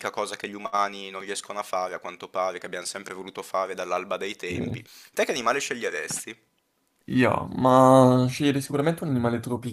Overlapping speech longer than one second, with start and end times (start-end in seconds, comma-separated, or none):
none